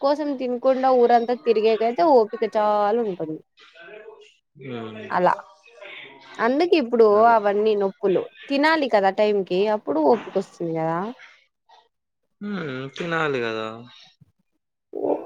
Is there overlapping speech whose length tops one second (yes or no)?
no